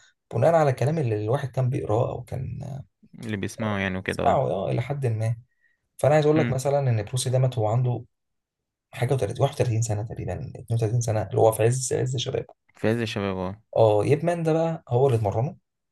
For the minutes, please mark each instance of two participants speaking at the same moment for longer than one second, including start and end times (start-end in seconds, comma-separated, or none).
none